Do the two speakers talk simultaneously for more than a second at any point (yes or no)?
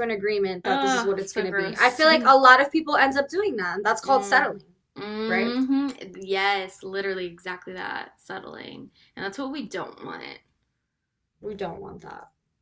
yes